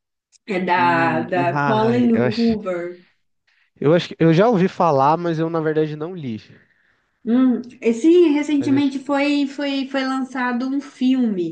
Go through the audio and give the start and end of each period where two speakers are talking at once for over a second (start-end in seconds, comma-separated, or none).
0.8-2.6